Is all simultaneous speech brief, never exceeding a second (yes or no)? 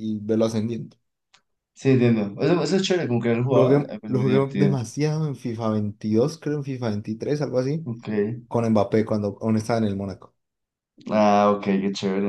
no